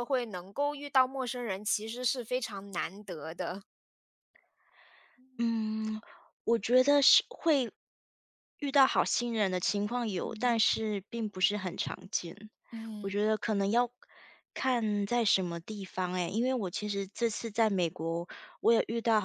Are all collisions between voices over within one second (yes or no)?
yes